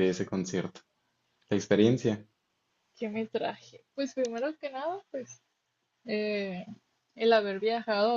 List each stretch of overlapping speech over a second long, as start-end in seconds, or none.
none